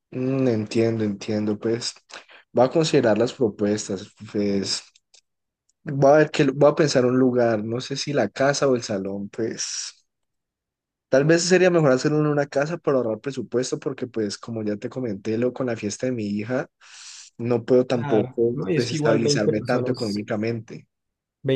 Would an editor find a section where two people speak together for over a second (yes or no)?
yes